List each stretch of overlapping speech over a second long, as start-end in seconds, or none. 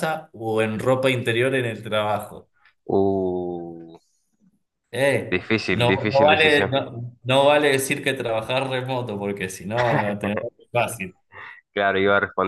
5.3-6.8